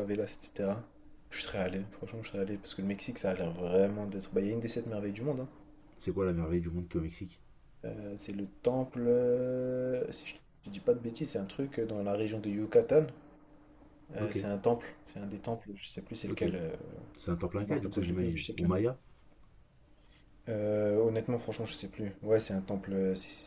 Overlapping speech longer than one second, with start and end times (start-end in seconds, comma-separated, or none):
17.6-18.8